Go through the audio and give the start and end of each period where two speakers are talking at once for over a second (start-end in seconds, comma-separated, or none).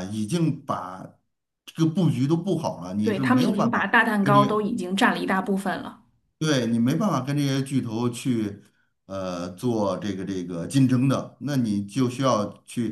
3.0-4.7